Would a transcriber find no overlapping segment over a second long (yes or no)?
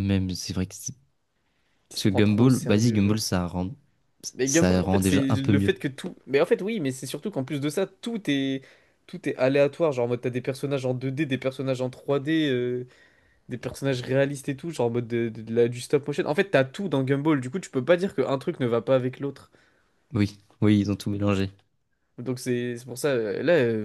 no